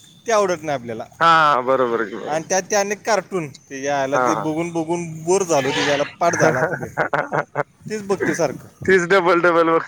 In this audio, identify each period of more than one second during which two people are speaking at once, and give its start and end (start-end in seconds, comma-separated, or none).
none